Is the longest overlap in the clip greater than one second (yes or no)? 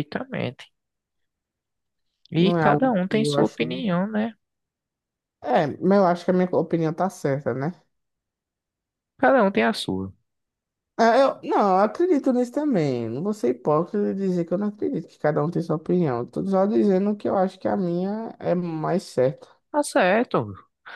yes